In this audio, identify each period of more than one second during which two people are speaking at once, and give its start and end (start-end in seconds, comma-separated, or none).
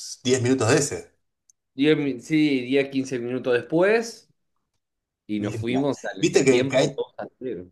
5.4-7.0